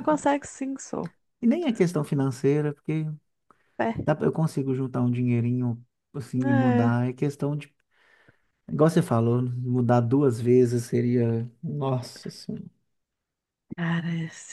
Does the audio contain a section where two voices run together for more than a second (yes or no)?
no